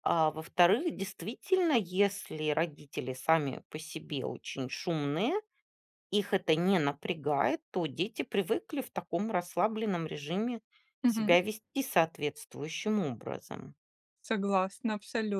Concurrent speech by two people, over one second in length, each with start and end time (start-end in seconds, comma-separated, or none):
none